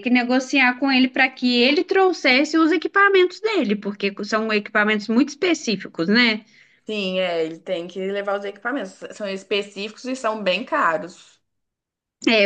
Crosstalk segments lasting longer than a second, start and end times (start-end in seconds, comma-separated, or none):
none